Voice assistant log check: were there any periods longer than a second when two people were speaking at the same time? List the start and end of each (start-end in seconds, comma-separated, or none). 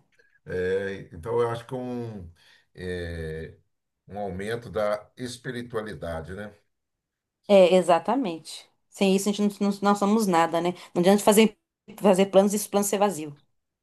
none